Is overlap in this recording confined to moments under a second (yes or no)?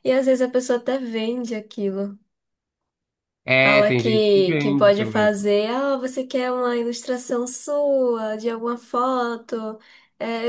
no